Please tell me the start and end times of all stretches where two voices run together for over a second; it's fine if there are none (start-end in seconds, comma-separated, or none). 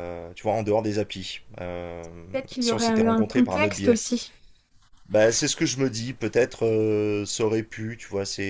2.6-4.0